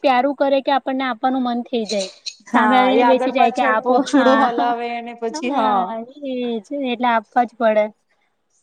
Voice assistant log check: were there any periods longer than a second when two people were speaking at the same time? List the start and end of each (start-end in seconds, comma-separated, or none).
2.6-4.5